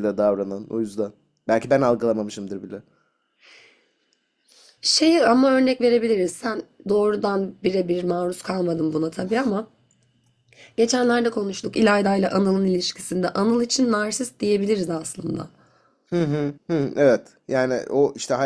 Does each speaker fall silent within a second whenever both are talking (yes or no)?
yes